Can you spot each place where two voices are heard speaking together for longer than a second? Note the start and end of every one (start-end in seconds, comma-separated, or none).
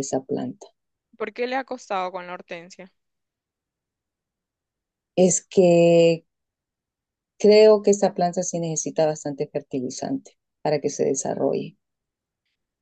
none